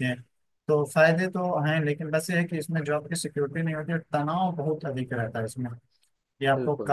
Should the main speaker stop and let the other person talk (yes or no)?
no